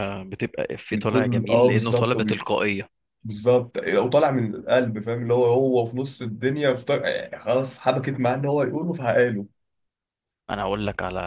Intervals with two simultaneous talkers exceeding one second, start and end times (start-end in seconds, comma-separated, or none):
0.9-2.2